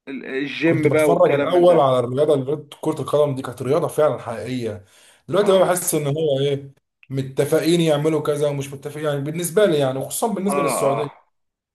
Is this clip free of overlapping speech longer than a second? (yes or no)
no